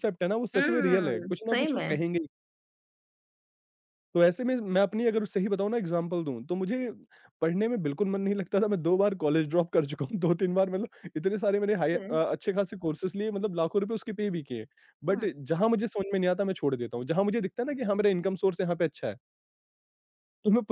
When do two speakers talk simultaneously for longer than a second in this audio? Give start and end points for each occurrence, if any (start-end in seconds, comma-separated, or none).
0.5-2.0